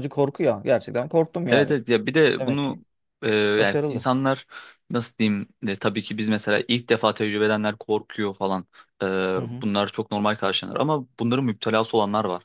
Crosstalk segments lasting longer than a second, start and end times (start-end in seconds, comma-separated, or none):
none